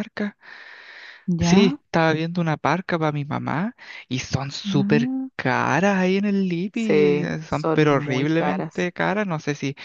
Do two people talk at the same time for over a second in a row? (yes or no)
yes